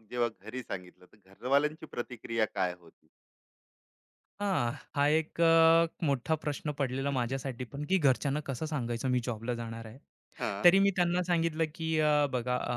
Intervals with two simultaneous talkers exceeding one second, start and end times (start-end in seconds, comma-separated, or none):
none